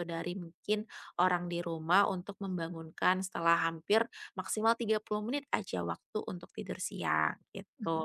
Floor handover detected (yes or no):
yes